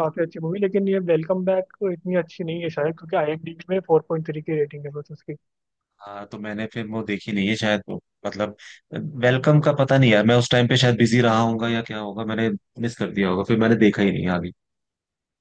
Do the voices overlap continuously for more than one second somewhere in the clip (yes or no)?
no